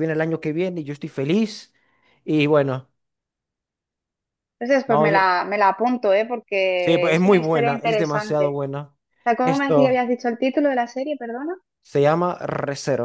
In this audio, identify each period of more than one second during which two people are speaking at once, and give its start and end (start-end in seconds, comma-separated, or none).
6.8-8.6